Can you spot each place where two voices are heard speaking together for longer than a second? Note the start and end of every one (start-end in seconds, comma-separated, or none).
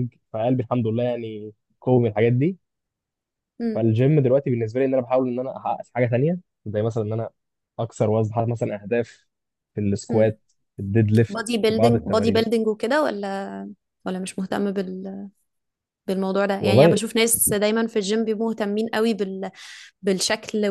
11.3-12.6